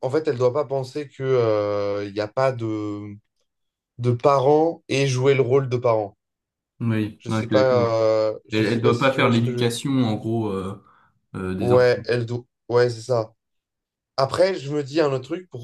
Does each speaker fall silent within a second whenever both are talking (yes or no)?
no